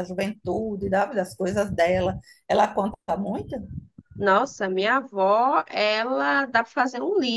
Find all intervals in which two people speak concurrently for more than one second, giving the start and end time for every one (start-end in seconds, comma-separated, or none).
none